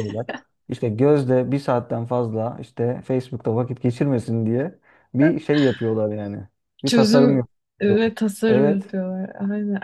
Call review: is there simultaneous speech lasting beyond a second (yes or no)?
yes